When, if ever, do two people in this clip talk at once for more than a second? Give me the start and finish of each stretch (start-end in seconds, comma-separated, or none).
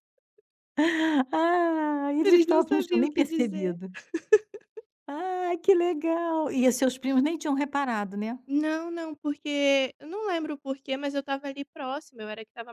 2.2-3.8